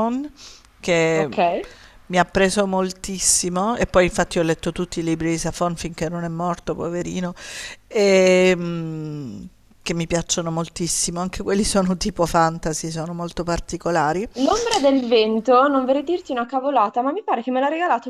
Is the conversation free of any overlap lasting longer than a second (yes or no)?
yes